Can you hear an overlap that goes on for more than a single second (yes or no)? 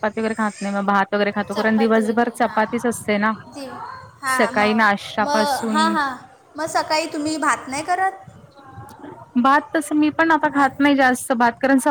yes